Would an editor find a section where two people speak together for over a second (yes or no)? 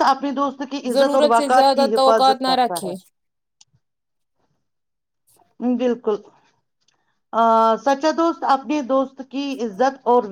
yes